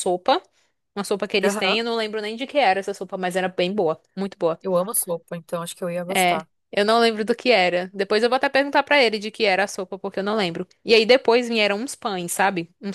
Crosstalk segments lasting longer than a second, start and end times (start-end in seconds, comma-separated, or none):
none